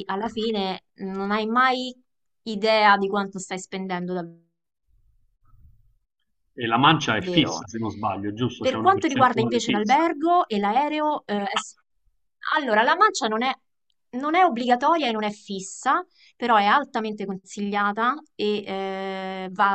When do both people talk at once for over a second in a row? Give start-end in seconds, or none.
8.6-10.1